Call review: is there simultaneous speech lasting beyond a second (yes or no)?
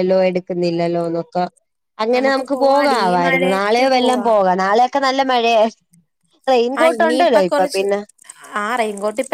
yes